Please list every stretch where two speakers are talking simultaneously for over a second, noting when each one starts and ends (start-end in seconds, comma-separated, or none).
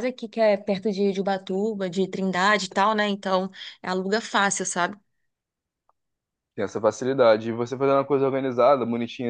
none